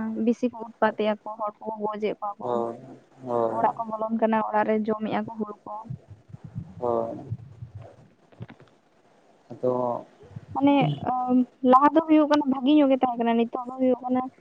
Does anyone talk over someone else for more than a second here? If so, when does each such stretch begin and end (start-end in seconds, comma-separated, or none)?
none